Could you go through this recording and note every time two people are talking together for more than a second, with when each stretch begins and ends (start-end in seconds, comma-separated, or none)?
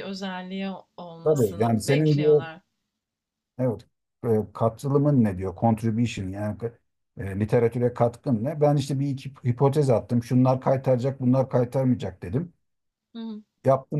1.2-2.4